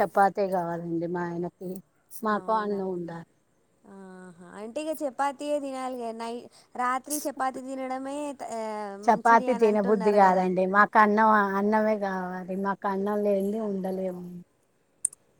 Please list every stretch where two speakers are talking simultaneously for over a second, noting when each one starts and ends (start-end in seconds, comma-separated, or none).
9.1-10.4